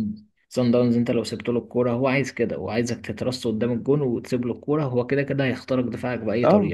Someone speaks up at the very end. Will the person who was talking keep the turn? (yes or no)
no